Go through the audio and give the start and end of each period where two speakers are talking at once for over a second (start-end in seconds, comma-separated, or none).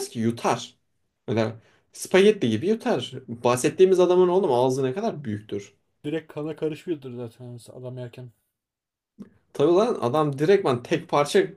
none